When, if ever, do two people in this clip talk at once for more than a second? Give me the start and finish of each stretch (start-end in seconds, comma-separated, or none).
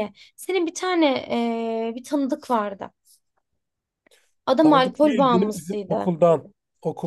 4.6-6.1